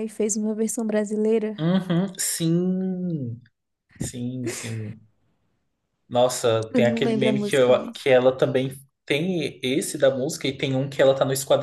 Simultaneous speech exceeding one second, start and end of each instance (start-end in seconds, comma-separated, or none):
6.7-8.1